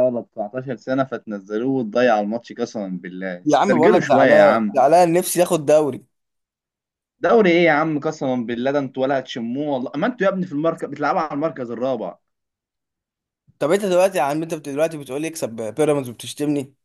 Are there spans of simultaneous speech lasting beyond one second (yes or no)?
yes